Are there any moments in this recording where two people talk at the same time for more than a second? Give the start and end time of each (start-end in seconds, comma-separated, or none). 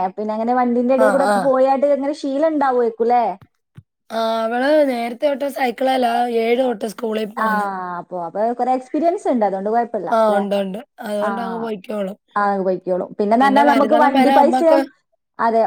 13.4-14.8